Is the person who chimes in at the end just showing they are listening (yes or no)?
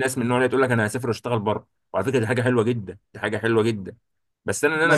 yes